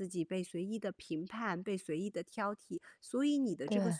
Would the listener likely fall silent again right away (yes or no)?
yes